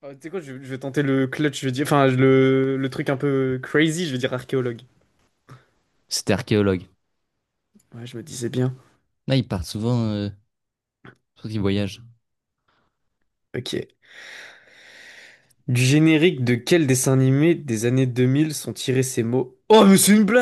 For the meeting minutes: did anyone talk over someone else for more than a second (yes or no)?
no